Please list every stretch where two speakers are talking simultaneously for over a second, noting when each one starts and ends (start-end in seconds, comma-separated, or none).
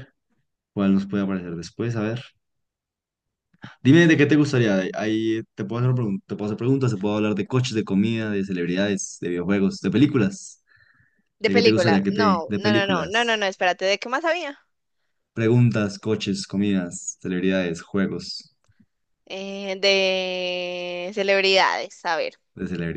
11.5-13.4